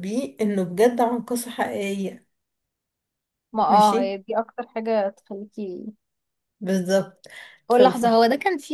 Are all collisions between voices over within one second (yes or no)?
yes